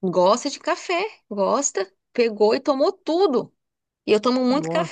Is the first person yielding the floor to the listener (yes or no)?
no